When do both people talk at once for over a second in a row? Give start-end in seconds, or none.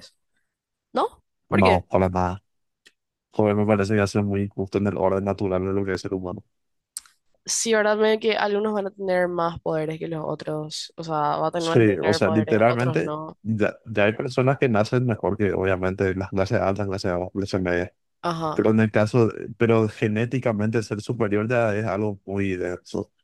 11.6-13.4